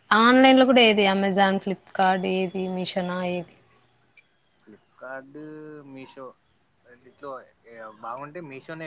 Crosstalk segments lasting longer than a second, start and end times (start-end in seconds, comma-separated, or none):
none